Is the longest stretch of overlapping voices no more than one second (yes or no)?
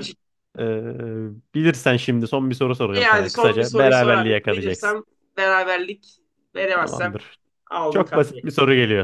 no